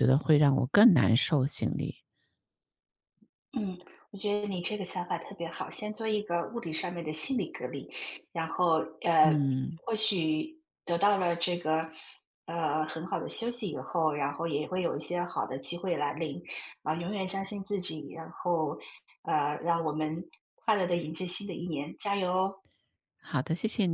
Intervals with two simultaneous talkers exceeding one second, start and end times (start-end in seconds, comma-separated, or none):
none